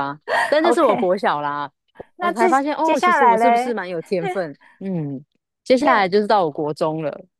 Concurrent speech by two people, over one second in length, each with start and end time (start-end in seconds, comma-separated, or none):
2.2-3.8